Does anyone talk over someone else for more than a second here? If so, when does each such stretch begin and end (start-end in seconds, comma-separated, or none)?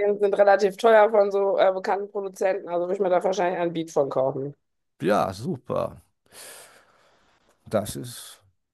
none